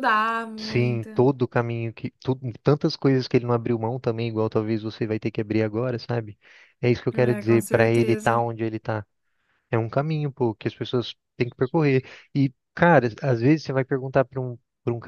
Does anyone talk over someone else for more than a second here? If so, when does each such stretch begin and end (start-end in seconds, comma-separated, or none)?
7.1-8.4